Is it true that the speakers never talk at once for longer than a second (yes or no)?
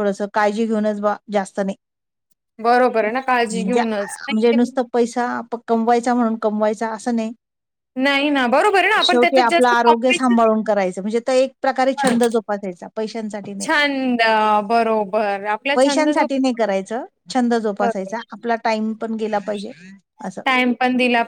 no